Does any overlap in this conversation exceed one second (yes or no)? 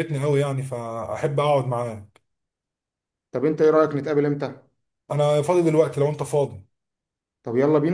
no